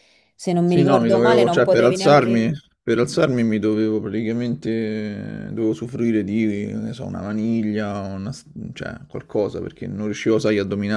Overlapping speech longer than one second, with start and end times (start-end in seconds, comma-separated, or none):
0.6-2.5